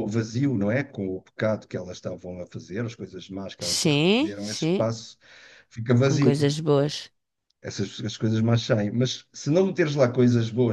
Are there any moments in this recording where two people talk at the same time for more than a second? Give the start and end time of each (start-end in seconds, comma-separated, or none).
3.6-4.9